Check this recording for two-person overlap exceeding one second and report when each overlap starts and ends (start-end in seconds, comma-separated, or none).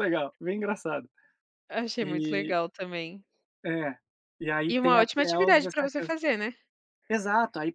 4.7-6.1